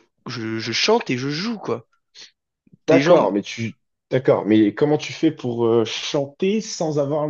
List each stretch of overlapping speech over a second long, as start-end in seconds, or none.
none